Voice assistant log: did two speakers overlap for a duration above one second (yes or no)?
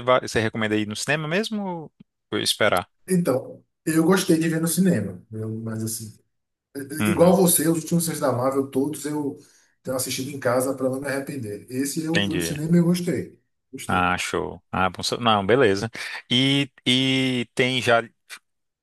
no